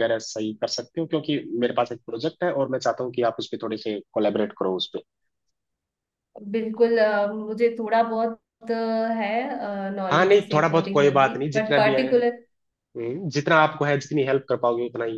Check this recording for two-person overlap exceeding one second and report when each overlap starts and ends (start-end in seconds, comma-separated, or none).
10.1-12.1